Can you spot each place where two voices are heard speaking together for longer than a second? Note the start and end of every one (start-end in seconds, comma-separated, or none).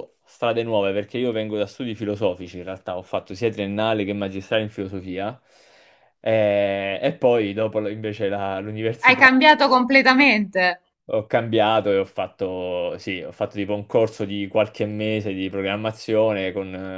none